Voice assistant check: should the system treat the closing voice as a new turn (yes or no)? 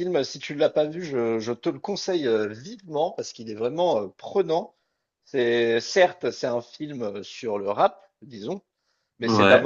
no